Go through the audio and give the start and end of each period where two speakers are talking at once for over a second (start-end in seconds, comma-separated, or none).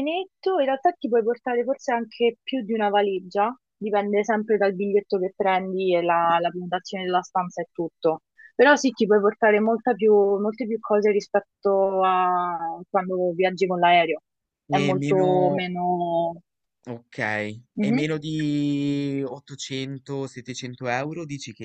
none